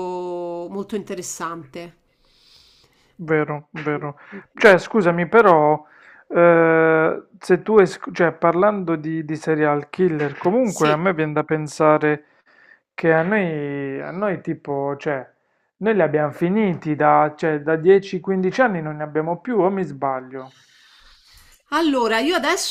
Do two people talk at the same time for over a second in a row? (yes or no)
no